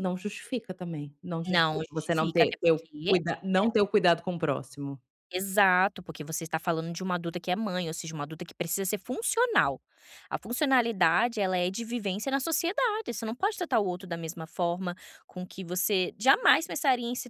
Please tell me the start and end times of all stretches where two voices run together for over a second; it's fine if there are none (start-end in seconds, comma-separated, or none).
1.5-2.9